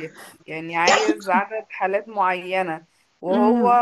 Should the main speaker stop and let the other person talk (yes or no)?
no